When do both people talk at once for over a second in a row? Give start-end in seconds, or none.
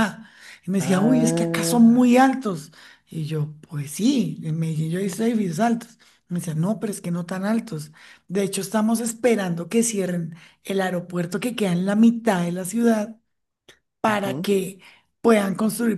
0.8-2.0